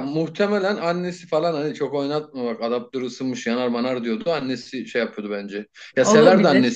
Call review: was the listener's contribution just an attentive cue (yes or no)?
yes